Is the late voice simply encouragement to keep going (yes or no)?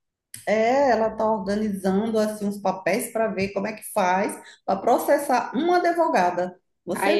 no